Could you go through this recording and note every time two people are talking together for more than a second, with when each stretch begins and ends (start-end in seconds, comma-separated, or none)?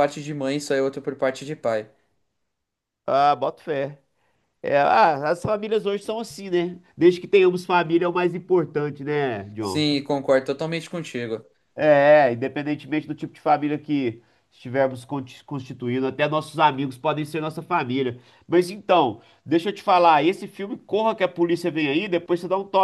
none